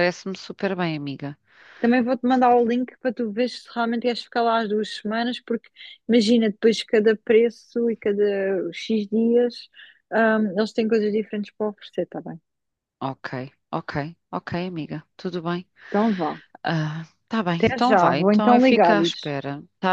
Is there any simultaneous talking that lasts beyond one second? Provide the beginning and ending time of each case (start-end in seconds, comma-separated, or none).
17.6-19.3